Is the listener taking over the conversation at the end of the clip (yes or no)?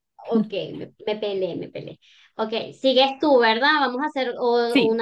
yes